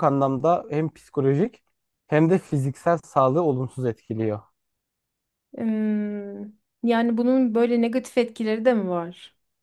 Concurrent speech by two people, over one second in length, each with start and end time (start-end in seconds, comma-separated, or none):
none